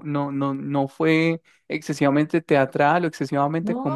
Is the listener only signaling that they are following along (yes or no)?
yes